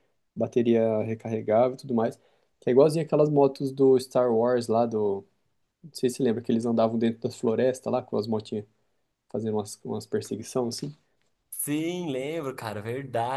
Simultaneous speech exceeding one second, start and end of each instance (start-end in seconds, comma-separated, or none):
none